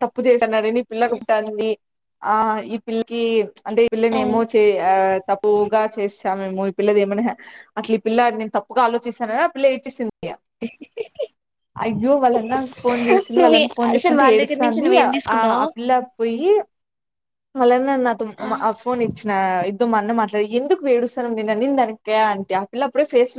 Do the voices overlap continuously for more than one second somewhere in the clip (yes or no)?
yes